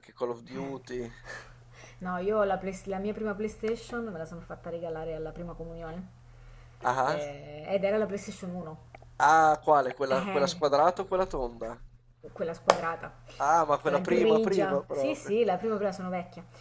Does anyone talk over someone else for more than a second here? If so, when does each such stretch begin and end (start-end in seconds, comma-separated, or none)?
13.8-15.3